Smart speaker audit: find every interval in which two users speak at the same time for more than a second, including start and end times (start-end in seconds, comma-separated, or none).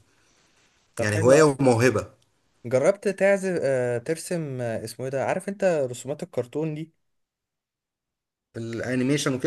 none